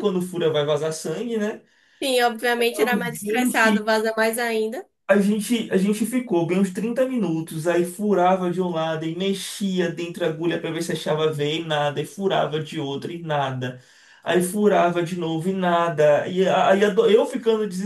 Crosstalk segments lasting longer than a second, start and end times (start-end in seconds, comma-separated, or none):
2.6-3.8